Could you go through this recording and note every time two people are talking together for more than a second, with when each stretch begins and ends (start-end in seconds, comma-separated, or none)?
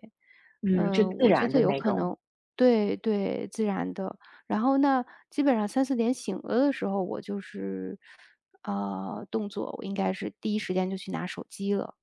0.8-2.1